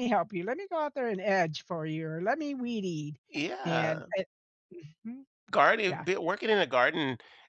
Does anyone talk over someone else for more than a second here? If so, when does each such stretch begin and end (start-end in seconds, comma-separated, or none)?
none